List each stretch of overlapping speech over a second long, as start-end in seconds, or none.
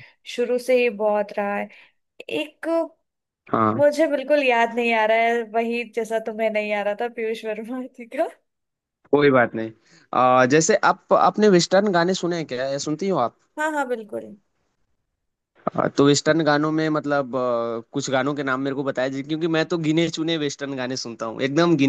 none